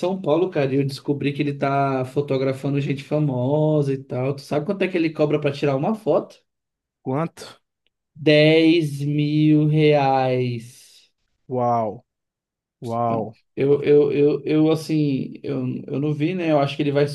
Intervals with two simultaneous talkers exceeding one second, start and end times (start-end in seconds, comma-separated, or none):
none